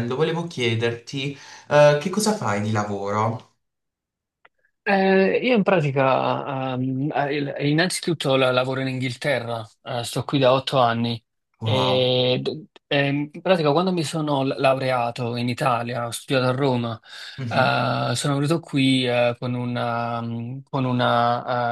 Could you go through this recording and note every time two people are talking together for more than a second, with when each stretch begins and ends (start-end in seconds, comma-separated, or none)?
none